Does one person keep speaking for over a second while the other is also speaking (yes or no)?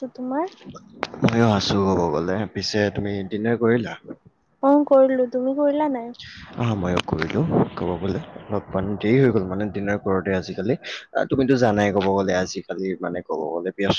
no